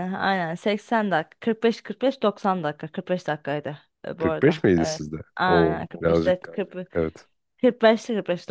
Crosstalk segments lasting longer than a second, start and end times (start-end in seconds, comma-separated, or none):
4.2-6.7